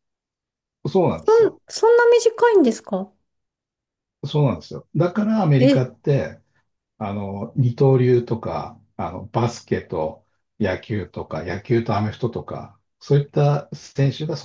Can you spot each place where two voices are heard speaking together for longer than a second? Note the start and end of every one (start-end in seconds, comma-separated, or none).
none